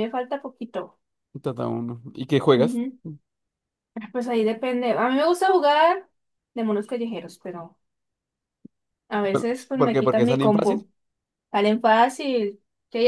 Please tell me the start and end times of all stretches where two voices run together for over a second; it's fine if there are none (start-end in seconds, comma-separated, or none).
9.3-10.8